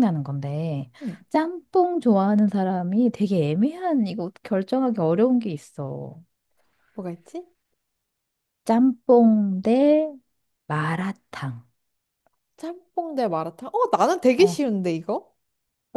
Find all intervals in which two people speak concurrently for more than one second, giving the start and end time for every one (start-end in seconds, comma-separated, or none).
none